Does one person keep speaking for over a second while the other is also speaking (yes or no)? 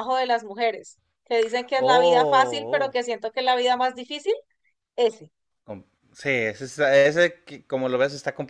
yes